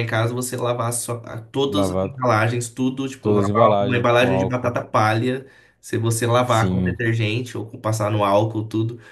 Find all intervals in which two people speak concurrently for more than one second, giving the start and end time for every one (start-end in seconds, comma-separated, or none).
3.2-4.8